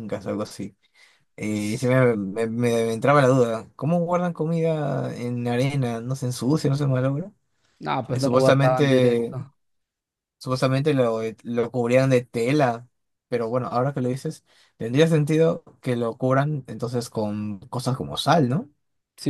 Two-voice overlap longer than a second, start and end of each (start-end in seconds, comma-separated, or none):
8.1-9.3